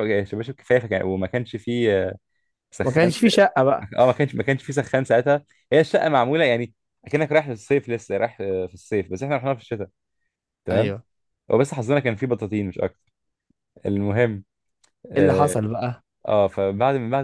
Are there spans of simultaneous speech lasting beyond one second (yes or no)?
no